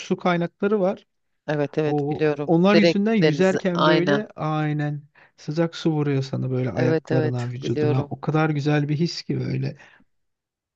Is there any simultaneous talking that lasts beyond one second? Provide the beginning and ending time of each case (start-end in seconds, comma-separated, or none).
1.9-4.2, 6.7-8.1